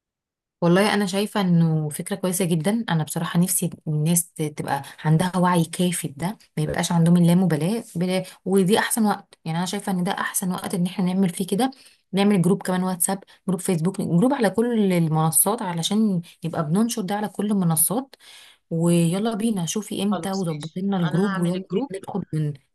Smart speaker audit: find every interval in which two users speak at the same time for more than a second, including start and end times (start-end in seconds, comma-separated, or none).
20.1-21.9